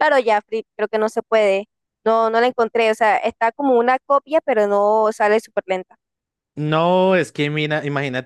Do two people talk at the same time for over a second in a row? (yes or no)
no